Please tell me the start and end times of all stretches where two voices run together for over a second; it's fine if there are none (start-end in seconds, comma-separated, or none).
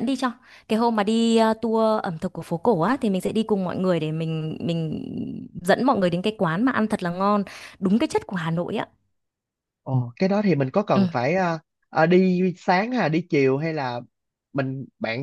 none